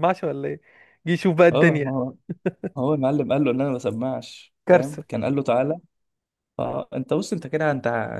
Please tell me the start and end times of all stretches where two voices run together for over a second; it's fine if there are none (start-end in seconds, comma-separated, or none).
none